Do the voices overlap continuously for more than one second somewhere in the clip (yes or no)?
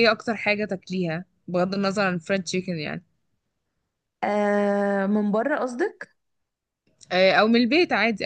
no